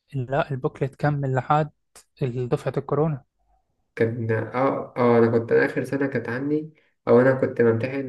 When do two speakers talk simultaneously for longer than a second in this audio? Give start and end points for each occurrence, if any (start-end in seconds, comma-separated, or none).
none